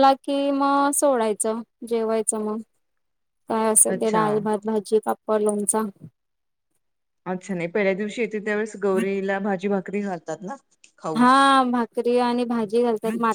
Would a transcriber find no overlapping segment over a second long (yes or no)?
yes